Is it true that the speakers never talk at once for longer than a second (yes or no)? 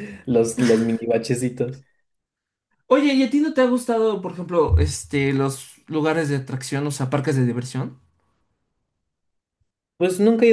yes